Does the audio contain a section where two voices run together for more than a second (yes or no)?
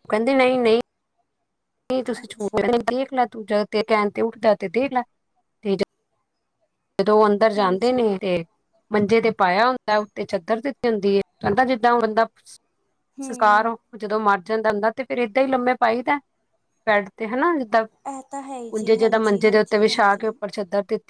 yes